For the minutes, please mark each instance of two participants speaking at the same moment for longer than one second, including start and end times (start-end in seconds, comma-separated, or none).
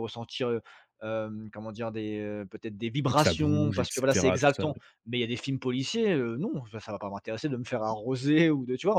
3.1-4.8